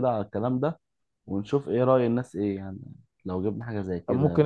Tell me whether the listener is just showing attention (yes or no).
no